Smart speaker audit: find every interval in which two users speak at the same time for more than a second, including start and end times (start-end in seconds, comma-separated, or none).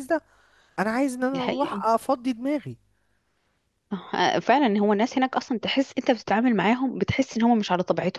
none